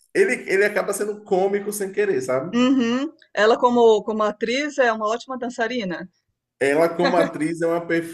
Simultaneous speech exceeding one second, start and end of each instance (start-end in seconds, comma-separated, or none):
none